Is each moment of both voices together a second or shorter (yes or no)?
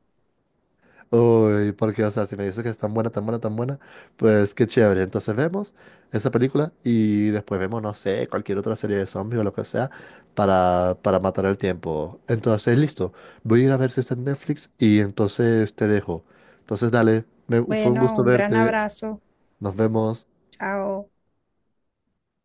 no